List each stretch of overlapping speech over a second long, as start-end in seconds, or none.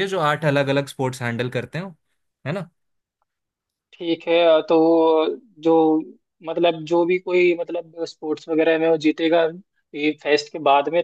none